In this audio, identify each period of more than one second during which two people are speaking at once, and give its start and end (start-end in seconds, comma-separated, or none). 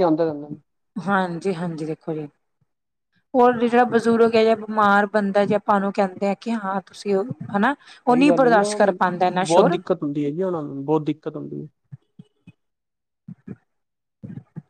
7.9-9.8